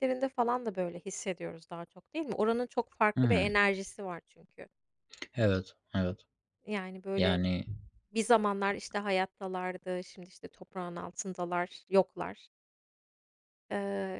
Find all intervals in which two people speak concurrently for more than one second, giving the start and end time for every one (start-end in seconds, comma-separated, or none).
none